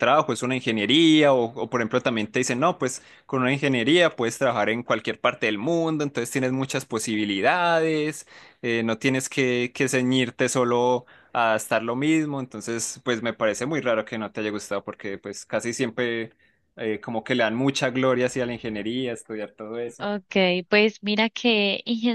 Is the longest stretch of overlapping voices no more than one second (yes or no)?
yes